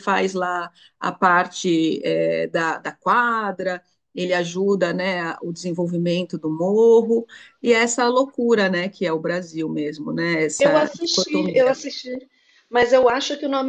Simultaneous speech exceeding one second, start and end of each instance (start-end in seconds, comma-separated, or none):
10.6-11.8